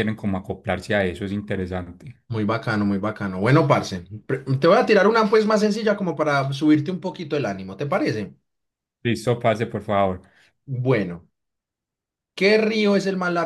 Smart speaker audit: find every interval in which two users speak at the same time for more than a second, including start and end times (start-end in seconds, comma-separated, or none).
none